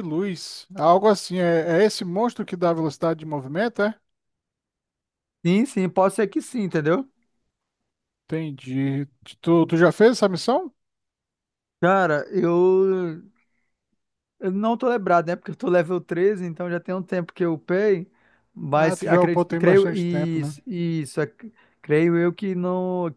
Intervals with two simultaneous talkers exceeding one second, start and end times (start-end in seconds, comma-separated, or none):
18.7-20.5